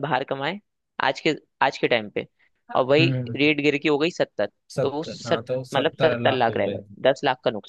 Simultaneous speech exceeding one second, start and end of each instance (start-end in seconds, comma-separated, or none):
4.8-6.8